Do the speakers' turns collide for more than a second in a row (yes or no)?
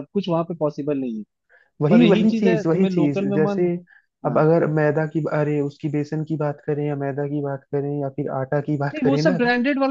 yes